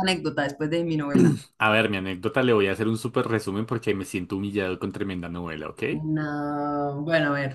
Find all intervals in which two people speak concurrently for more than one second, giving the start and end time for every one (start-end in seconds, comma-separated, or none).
none